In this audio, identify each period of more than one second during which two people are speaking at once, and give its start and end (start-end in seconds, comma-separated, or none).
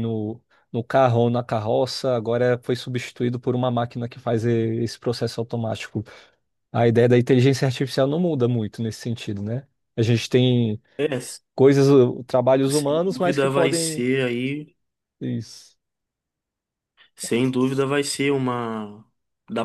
12.7-14.1